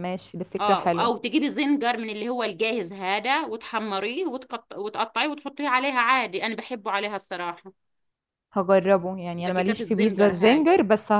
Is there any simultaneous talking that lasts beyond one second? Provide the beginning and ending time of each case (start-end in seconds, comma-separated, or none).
9.4-10.7